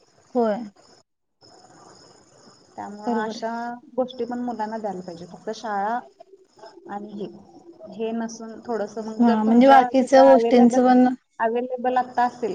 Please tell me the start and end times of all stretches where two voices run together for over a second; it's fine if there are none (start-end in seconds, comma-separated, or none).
9.3-10.8